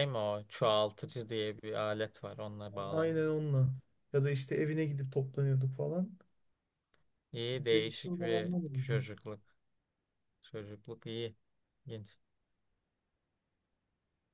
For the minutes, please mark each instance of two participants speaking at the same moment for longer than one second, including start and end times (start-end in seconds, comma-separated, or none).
7.7-9.0